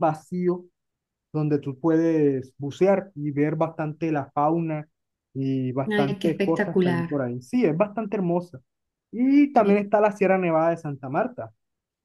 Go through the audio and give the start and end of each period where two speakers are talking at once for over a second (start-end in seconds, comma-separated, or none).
5.9-7.1